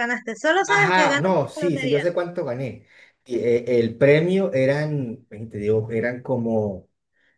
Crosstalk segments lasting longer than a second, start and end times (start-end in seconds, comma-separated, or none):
0.7-2.0